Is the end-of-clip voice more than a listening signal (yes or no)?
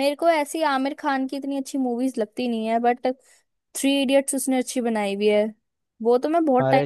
yes